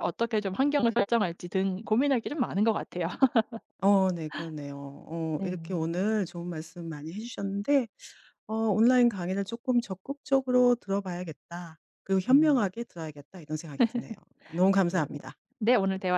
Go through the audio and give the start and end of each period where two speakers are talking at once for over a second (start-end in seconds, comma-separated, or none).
none